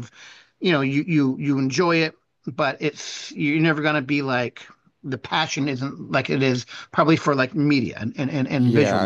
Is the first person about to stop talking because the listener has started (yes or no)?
yes